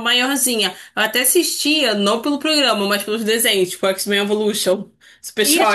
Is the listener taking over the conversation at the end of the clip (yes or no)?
yes